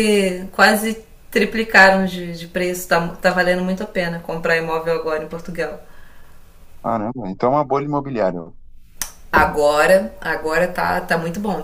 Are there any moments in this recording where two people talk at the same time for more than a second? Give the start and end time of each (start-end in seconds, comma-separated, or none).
none